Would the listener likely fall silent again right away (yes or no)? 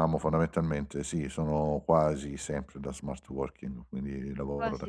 no